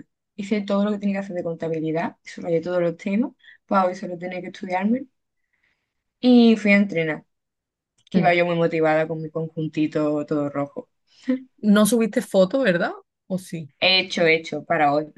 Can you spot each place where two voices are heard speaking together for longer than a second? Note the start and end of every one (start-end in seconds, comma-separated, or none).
none